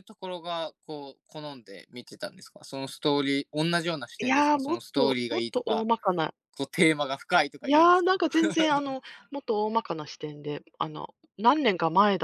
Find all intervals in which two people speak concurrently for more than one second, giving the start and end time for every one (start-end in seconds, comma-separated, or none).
4.2-5.9